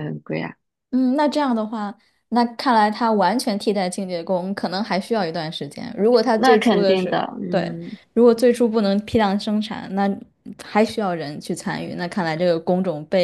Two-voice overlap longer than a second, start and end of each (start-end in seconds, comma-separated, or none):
6.4-7.7